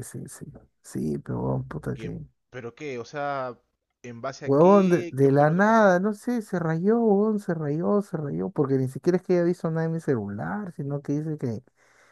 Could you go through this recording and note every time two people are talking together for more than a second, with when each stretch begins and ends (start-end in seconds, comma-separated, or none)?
4.5-5.8